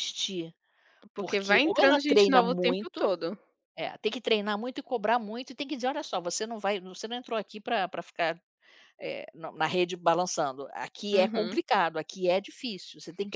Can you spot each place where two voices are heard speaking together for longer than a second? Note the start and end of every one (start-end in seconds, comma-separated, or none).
1.2-3.2